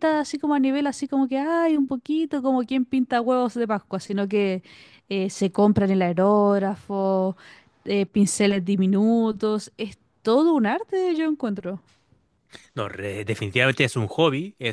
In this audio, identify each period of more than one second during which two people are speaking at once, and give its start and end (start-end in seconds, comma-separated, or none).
none